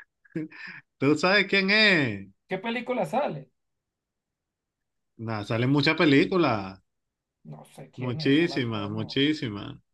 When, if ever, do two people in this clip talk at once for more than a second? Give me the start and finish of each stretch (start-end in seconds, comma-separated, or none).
8.0-9.3